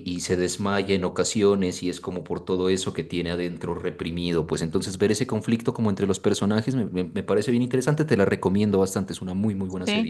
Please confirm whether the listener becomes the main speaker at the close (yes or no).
yes